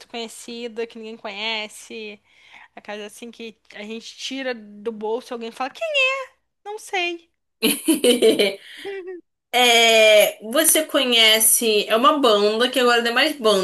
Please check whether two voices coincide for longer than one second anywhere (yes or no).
no